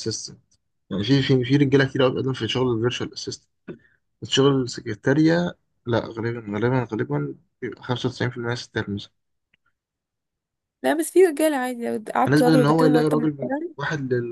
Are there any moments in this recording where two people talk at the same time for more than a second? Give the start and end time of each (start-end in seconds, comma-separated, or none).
12.2-13.7